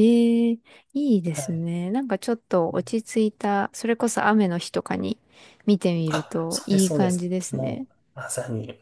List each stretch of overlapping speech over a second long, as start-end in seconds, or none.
6.1-7.9